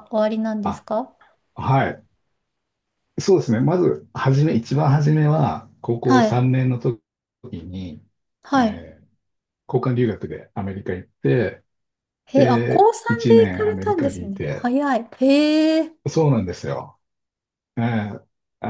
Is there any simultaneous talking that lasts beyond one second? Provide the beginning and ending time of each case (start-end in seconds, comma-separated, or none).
12.3-14.7